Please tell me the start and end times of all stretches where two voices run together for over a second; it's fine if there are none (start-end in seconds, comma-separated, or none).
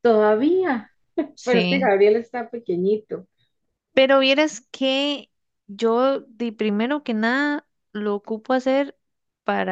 none